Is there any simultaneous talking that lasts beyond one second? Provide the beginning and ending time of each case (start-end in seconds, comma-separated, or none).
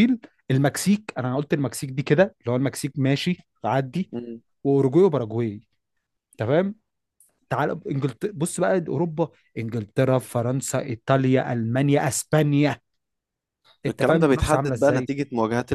13.9-15.1